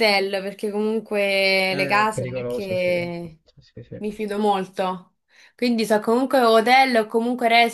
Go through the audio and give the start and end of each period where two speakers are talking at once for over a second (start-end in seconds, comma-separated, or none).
1.7-2.9